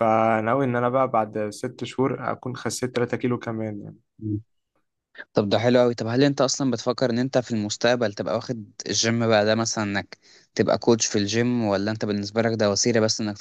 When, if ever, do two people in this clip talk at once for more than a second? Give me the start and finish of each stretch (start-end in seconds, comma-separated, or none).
none